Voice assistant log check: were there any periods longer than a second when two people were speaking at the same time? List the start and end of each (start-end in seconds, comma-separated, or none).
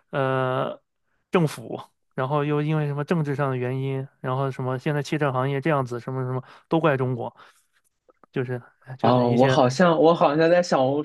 none